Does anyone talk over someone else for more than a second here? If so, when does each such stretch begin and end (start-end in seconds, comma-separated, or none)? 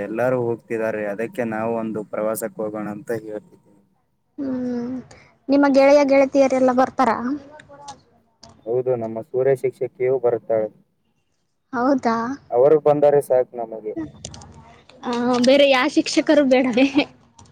none